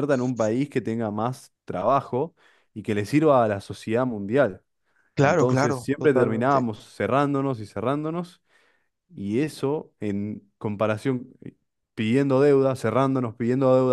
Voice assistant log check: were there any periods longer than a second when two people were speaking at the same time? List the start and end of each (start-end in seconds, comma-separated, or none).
5.2-6.7